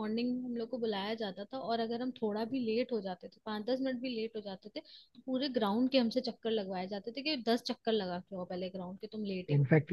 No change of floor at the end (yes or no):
no